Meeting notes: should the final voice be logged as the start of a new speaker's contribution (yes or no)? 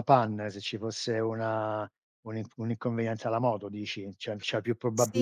yes